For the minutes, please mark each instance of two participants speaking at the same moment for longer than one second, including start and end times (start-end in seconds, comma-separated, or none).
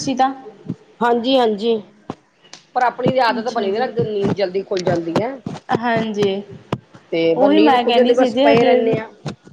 7.4-8.9